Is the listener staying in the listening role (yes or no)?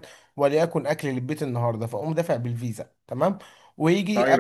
no